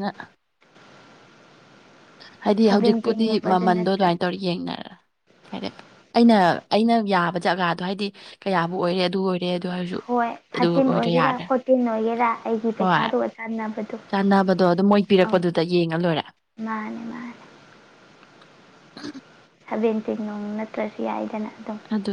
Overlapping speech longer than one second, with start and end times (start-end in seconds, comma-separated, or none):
2.7-4.2